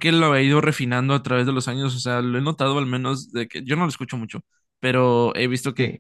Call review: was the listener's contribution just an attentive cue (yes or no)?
yes